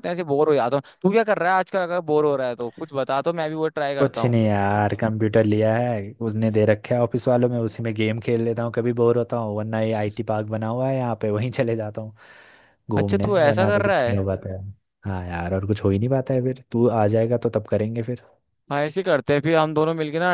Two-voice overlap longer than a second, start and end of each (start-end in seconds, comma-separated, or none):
13.0-14.2